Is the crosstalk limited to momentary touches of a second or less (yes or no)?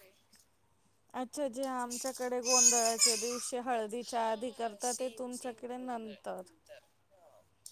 no